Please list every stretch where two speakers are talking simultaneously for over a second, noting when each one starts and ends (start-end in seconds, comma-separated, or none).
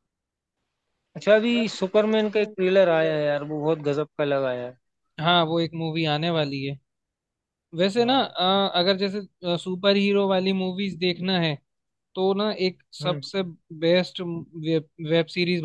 1.6-3.2